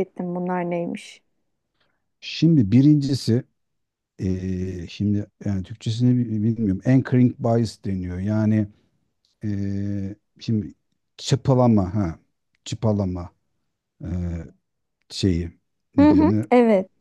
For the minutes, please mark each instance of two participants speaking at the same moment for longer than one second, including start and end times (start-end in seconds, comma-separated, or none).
none